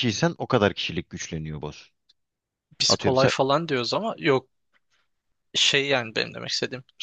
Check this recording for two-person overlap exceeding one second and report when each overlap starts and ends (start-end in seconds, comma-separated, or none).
none